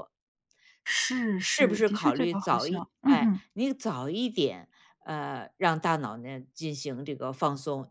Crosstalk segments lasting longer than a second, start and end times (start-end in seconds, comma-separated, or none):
1.4-3.4